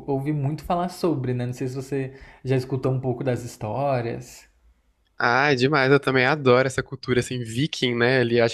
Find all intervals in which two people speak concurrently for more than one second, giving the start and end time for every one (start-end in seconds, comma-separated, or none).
none